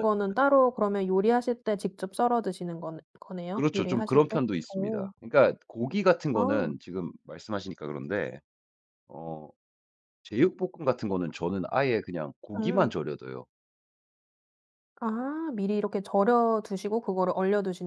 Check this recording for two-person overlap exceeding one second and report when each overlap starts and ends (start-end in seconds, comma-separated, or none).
3.5-5.1